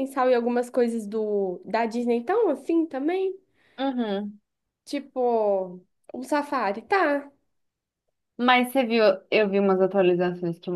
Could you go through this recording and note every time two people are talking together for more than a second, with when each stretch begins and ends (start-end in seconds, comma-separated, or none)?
none